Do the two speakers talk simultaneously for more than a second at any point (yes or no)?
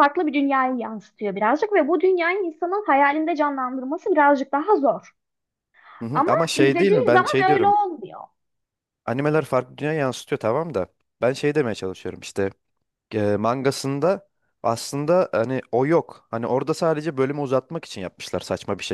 yes